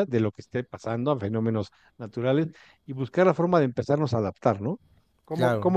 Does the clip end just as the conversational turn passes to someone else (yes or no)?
no